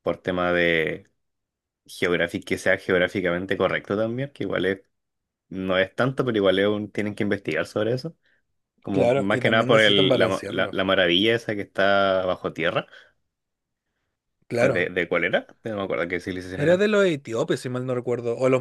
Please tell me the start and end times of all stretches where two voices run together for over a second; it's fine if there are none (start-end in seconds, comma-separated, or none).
8.9-10.8